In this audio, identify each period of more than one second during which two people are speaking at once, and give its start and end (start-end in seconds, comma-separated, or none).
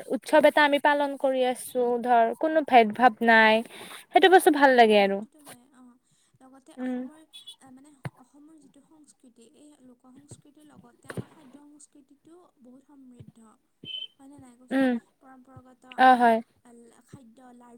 none